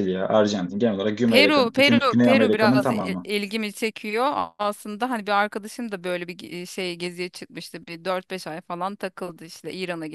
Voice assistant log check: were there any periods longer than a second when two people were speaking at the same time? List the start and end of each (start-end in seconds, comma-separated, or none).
1.3-3.3